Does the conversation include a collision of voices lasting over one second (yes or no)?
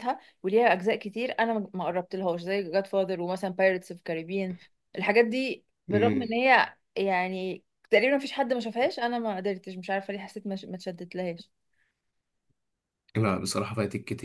no